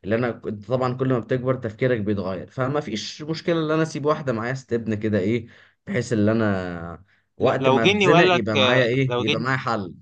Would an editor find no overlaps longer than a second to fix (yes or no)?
no